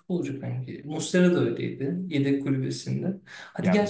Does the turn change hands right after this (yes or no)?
no